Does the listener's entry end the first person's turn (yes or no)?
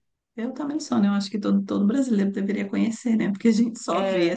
no